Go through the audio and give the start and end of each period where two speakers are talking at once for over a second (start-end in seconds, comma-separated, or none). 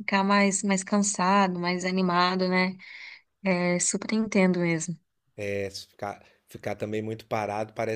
none